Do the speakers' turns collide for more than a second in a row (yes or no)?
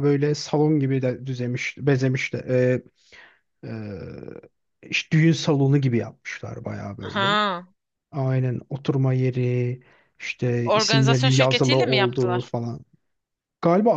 yes